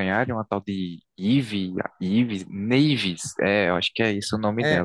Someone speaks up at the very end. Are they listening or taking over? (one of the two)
taking over